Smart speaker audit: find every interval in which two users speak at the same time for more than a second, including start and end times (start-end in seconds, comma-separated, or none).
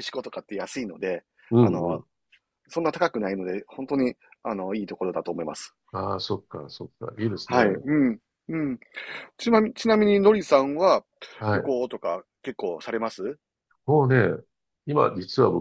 none